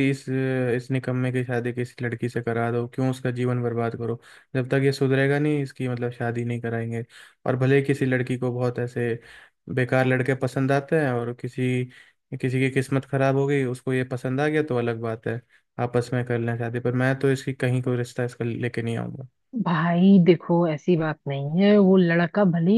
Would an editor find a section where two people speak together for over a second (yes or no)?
no